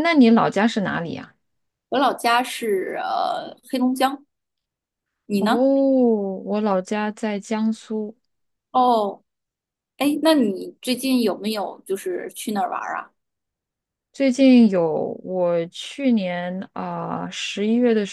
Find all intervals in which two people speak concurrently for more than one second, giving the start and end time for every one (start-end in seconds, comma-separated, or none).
none